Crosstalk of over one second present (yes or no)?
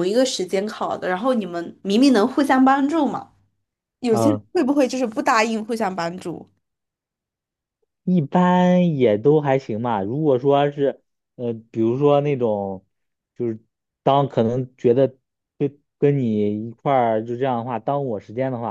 no